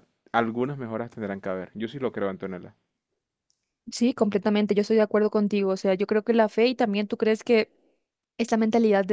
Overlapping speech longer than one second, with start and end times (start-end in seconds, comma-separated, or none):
none